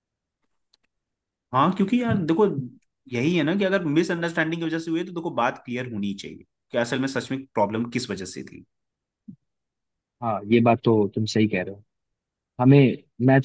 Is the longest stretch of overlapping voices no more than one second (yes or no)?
yes